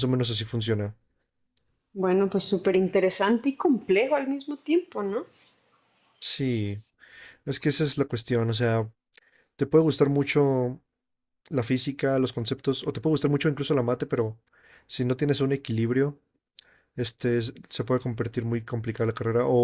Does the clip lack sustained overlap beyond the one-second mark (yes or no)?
yes